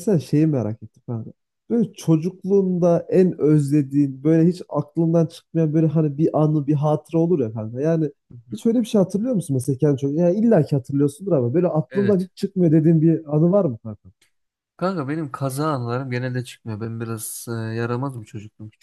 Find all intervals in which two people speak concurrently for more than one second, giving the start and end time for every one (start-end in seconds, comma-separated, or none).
none